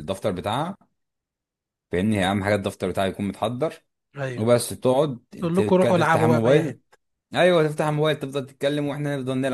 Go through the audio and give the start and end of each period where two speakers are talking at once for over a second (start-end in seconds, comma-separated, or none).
5.4-6.8